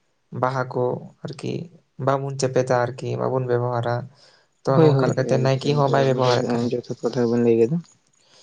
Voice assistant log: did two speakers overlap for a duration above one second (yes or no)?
yes